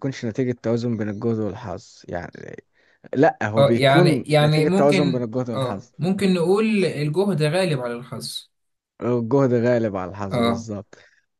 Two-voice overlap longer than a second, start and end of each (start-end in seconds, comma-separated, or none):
3.6-5.9